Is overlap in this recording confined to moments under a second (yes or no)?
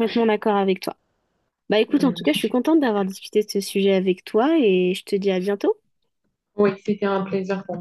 yes